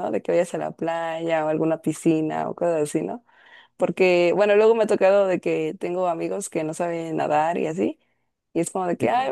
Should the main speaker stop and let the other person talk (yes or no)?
no